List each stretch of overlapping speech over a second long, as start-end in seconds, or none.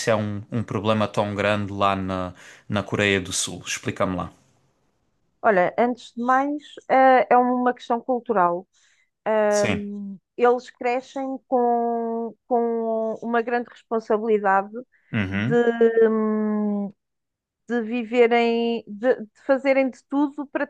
none